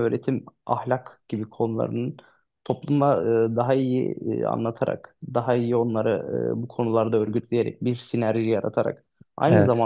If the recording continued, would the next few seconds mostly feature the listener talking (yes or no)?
no